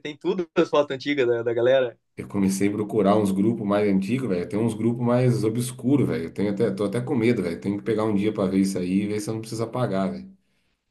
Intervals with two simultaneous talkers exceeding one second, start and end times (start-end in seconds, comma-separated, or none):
none